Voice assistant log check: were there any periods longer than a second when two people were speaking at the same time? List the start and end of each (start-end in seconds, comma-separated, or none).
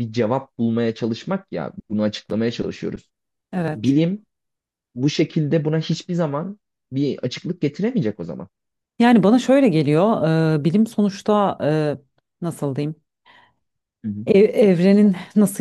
none